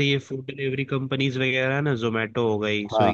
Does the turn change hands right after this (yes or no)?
no